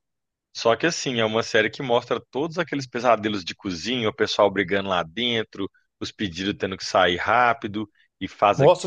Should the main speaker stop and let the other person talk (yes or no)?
yes